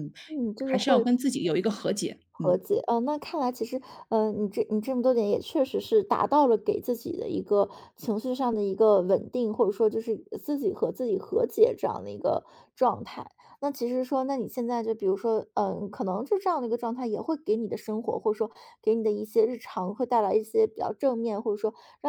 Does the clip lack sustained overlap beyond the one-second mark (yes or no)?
yes